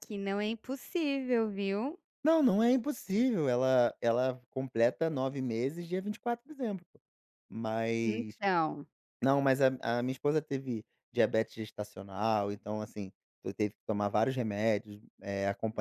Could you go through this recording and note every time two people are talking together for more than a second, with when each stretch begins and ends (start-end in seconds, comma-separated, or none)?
none